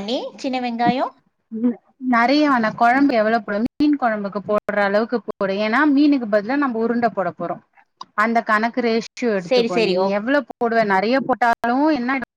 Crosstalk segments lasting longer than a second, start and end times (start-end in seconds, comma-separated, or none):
none